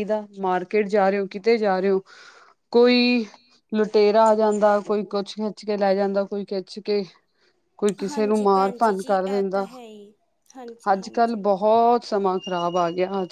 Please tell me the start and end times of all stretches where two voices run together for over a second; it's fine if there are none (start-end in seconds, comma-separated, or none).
8.1-9.7